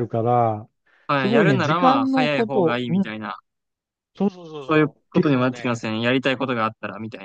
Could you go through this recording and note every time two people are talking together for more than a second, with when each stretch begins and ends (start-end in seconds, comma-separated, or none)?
1.2-3.1, 4.6-5.9